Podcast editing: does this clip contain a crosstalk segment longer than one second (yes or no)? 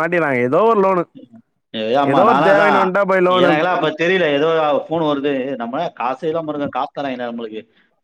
no